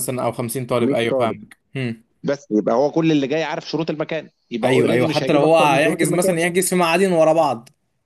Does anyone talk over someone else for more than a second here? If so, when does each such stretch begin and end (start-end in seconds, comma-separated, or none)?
4.6-6.4